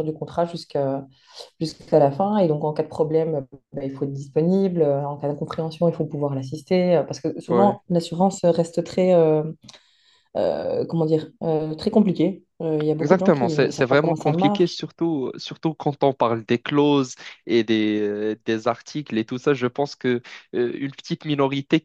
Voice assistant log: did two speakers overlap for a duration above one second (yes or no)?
yes